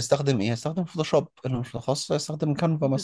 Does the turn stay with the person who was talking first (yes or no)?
no